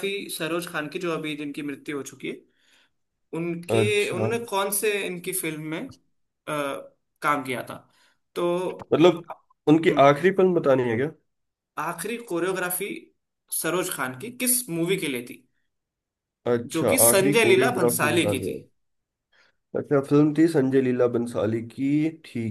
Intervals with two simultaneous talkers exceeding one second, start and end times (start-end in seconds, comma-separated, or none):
16.7-18.6